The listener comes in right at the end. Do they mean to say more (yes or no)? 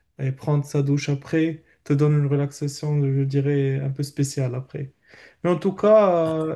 no